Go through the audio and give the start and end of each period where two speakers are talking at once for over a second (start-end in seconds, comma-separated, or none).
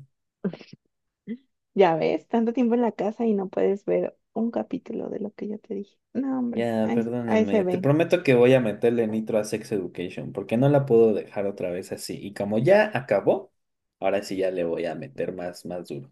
6.5-7.9